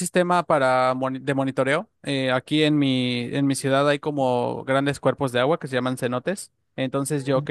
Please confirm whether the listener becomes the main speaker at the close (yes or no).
no